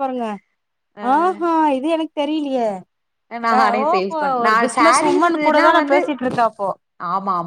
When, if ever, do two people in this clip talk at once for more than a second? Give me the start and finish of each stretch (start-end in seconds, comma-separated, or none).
3.6-6.0